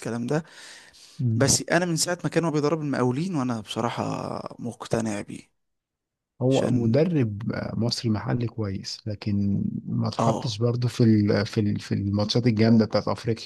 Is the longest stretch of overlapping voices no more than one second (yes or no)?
yes